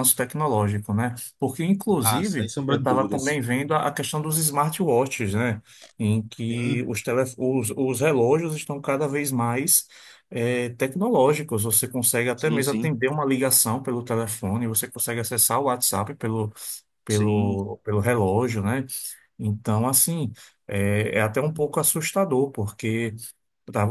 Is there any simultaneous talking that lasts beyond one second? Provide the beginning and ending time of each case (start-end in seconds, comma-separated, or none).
2.0-3.4